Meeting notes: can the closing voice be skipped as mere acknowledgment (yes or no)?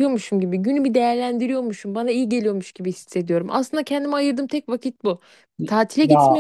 yes